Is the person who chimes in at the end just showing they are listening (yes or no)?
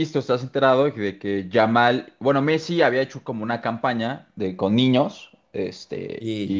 yes